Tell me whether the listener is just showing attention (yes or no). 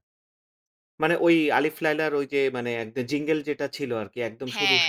yes